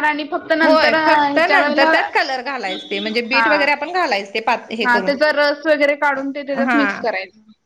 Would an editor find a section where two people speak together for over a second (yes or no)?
yes